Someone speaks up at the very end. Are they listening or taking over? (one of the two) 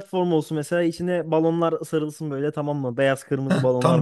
listening